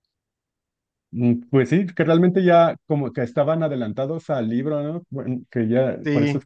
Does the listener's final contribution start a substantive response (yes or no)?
no